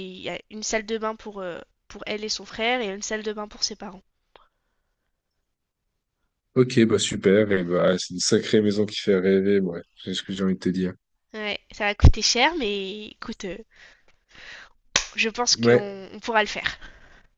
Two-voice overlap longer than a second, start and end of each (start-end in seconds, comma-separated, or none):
none